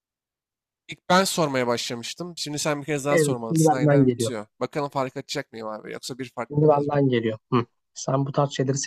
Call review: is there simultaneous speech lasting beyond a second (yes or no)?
yes